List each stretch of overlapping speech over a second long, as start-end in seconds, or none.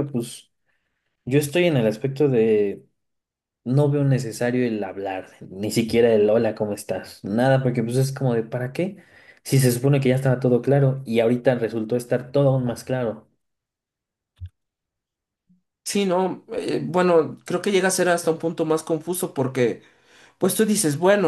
none